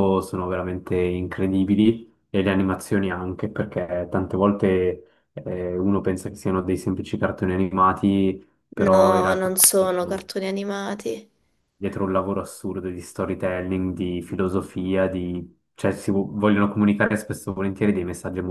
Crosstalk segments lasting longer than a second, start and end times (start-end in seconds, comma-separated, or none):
8.9-10.3